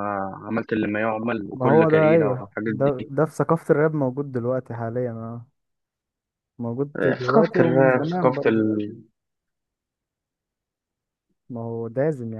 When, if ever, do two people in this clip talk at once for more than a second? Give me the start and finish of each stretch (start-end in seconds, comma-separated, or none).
1.5-3.1, 7.0-8.6